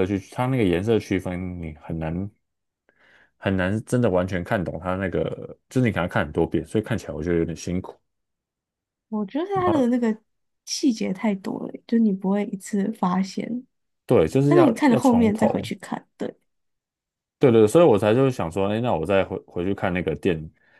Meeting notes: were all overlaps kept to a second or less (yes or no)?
no